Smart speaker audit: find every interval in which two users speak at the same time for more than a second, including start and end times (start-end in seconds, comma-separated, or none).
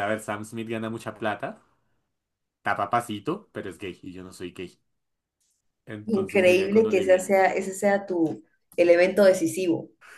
6.1-7.3